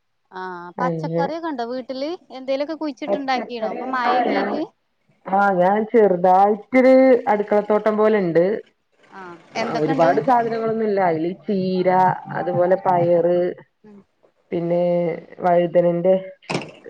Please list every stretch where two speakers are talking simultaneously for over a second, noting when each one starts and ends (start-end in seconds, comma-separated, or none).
3.1-4.5